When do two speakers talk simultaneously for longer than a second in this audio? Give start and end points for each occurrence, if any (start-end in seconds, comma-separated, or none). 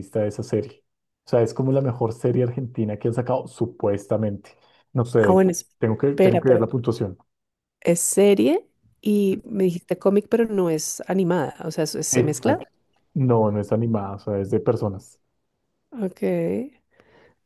5.2-6.6